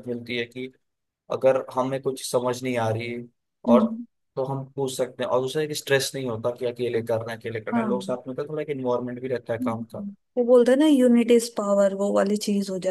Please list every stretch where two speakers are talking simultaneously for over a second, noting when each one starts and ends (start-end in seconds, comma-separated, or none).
none